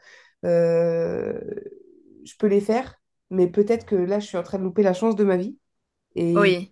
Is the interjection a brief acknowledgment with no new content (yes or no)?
yes